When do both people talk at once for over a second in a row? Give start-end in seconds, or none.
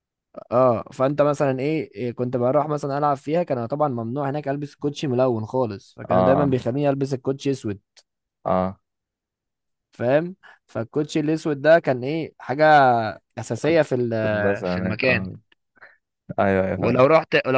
13.6-15.3